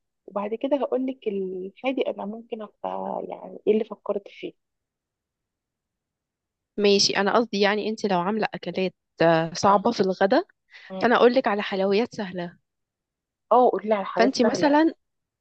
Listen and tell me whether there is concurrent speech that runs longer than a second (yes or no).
no